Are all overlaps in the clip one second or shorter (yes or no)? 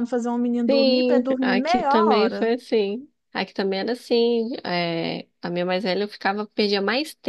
no